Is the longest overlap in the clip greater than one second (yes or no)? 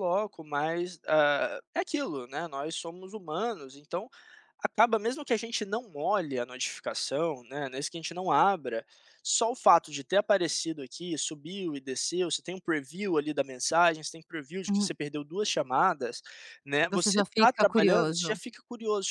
yes